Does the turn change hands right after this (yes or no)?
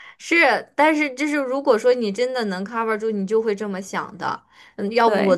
no